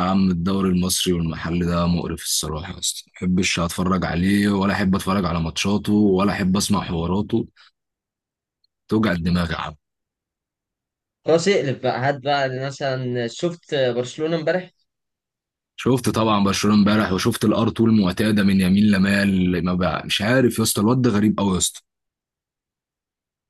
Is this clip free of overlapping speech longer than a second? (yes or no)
yes